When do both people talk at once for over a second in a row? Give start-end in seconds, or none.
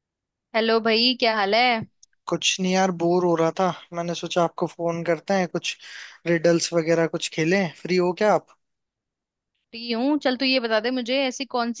none